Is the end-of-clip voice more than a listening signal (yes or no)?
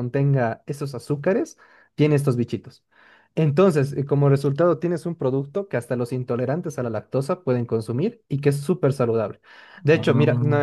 no